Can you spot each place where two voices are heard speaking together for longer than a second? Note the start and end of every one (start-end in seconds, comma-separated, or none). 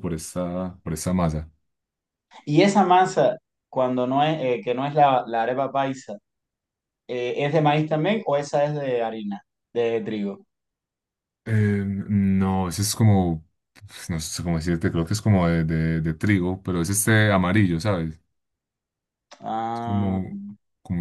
none